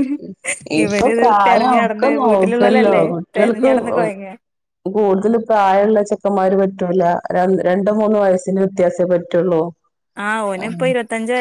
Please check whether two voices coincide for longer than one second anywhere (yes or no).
yes